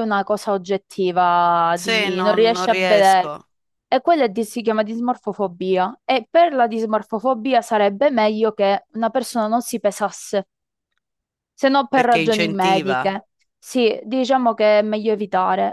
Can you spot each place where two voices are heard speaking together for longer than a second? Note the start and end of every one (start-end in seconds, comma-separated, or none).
1.8-3.3, 11.9-13.1